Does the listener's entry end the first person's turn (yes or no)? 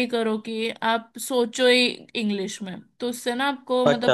no